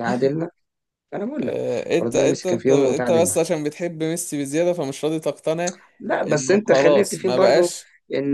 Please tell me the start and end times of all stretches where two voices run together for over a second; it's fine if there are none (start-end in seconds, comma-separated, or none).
1.4-3.5, 6.3-7.7